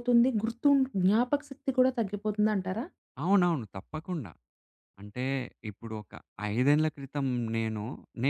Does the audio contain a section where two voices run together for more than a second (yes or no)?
no